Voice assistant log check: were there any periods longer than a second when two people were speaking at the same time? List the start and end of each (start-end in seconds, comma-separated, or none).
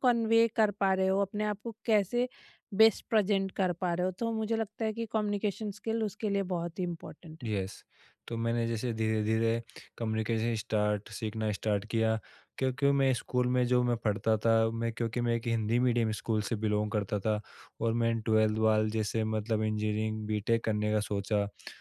none